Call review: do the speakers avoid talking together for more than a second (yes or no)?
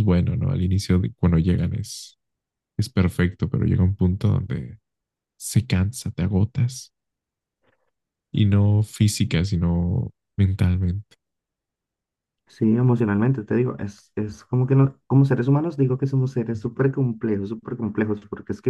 yes